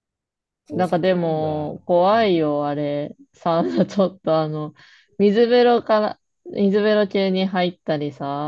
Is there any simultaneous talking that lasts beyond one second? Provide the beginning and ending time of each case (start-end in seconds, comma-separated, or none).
0.7-2.3